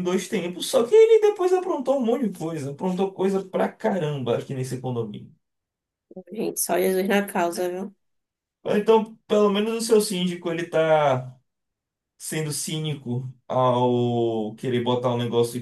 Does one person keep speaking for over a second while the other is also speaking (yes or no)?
no